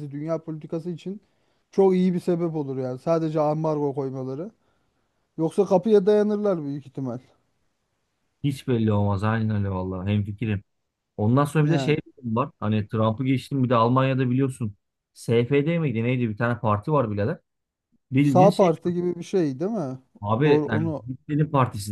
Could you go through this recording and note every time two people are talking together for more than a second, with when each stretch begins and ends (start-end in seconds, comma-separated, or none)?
none